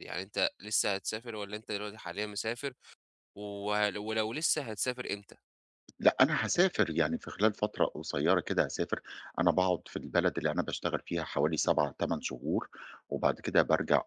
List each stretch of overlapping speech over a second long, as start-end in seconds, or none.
none